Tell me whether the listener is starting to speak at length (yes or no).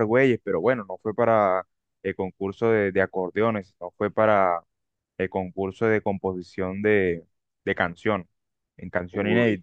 yes